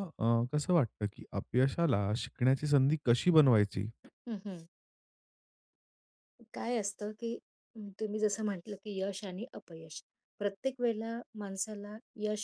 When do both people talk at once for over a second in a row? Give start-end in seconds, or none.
none